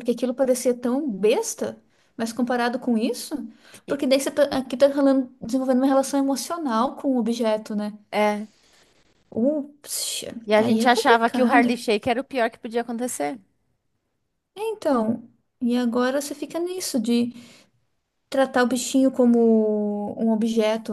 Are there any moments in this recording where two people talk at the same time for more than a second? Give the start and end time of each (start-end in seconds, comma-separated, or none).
10.4-11.7